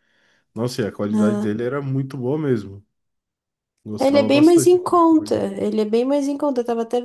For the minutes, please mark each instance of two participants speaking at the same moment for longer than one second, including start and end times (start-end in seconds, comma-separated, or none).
4.0-5.4